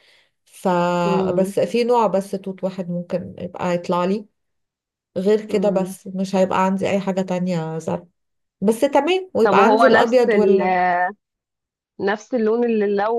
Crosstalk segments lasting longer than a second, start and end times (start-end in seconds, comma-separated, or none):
9.4-10.6